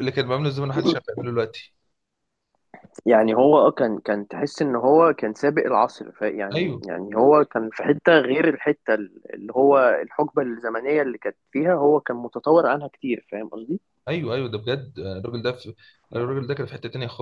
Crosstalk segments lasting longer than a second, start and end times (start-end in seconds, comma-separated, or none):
none